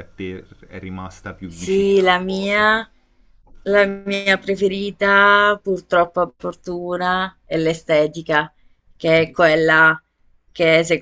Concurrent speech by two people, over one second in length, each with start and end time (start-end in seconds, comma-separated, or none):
1.5-2.7